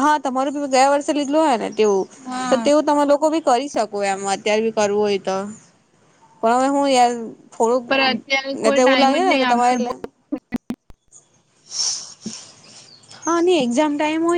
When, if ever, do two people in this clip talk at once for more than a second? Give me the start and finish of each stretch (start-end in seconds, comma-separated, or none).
7.9-9.7